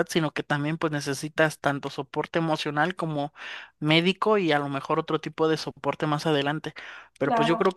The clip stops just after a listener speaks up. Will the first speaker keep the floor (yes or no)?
yes